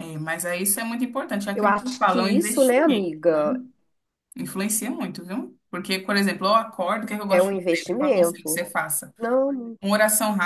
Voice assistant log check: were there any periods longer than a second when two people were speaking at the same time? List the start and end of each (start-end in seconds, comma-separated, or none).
1.5-3.4, 7.3-8.6